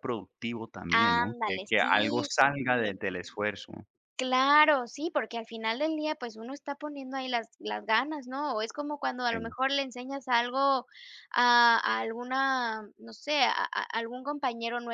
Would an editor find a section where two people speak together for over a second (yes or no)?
yes